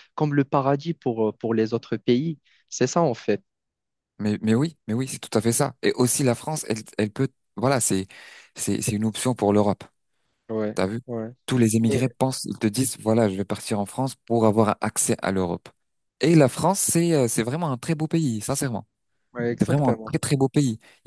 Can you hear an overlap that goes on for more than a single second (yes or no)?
no